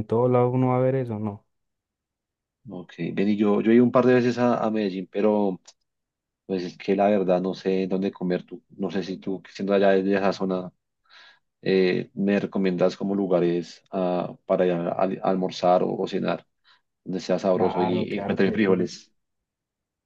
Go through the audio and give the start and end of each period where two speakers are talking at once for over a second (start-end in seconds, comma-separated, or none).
17.5-18.9